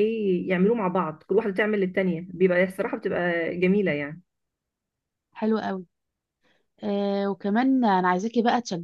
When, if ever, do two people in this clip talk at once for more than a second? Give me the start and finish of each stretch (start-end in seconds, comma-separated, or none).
none